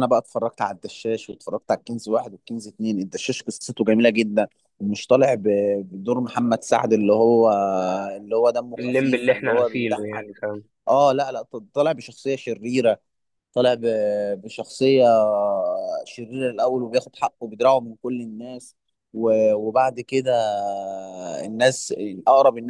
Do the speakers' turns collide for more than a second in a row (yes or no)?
yes